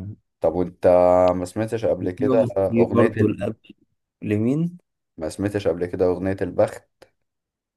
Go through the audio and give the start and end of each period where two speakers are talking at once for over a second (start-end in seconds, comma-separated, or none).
2.0-3.4